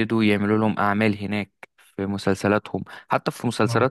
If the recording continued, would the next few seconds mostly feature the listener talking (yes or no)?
no